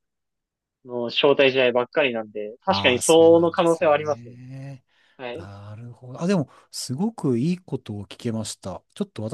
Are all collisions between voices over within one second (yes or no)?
no